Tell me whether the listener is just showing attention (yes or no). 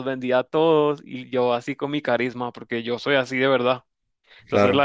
yes